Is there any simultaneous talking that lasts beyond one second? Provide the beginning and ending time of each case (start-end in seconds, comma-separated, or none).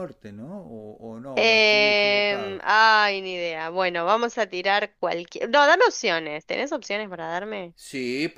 1.4-2.6